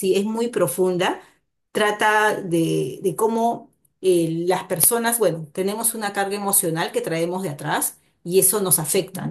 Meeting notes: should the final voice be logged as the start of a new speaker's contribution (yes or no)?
no